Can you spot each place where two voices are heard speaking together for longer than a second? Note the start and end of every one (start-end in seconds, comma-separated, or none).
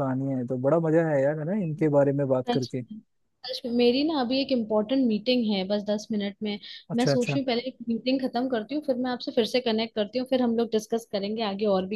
none